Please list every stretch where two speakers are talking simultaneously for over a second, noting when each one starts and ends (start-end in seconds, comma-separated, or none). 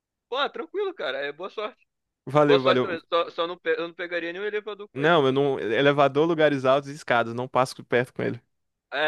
none